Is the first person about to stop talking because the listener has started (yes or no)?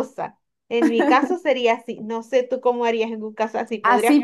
yes